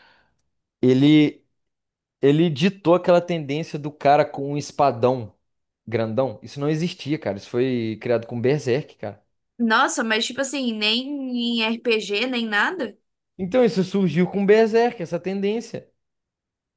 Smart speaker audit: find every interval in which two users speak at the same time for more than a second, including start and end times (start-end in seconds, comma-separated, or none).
none